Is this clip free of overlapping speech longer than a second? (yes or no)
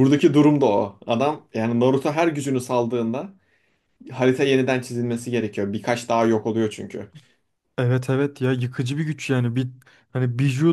yes